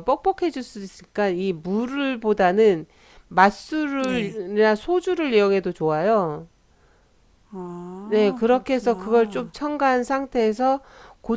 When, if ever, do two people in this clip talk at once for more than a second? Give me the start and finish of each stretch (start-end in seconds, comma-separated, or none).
8.1-9.5